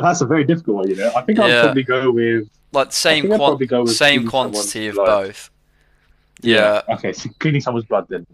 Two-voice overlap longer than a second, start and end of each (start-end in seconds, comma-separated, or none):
3.1-5.2